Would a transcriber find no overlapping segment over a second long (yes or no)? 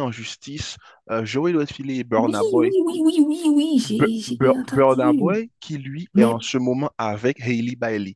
no